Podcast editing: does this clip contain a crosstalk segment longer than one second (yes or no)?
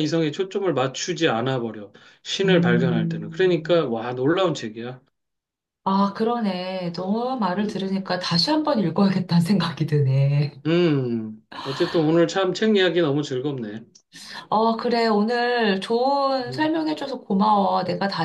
yes